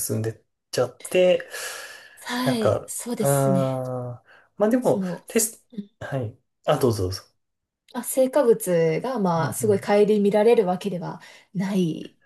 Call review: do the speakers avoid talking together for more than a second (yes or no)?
no